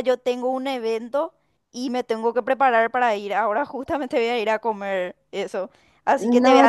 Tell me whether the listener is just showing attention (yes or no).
no